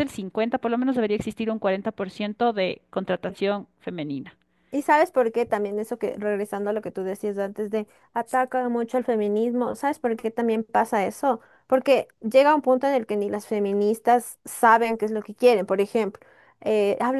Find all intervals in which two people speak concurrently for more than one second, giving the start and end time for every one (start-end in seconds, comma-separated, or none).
none